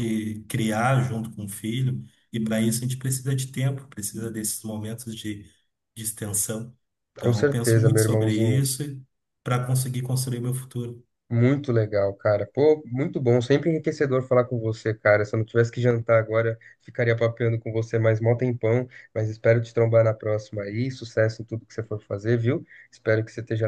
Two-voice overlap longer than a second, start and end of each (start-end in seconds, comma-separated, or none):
7.2-8.6